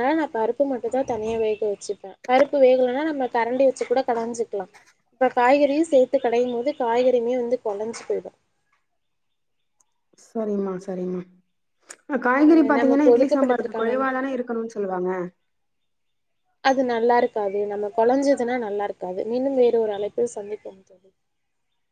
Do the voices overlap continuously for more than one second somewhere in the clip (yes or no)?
yes